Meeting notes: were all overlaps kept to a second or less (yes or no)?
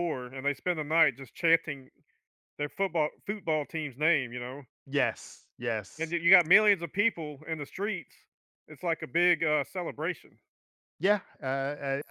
yes